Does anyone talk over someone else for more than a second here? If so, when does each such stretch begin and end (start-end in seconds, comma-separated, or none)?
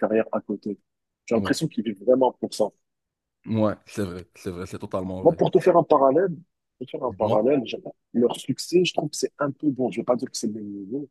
none